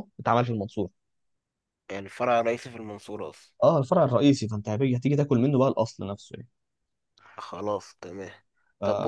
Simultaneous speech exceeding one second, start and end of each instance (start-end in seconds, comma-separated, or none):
none